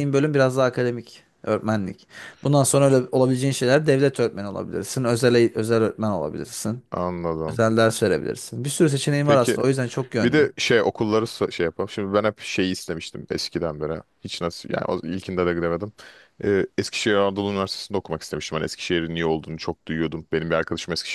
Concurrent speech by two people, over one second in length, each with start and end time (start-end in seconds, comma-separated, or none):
none